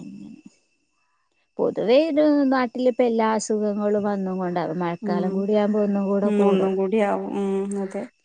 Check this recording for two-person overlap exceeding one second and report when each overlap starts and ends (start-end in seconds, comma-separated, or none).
none